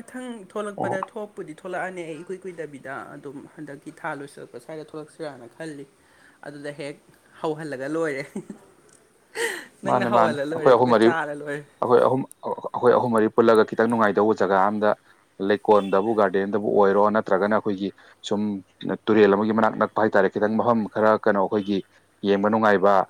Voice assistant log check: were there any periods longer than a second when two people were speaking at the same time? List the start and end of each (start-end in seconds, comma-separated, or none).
9.9-11.6